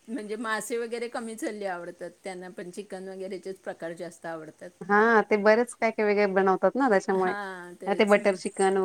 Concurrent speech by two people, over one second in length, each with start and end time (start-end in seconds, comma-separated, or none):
none